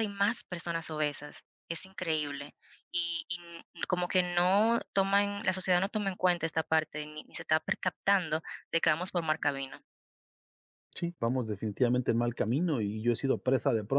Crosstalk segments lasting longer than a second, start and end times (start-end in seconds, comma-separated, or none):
none